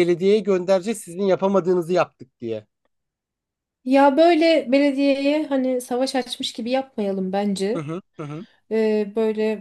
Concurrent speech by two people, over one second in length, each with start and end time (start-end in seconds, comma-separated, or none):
none